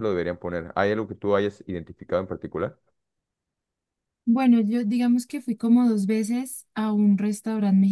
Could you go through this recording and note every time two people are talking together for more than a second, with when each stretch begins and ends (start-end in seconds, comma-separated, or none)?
none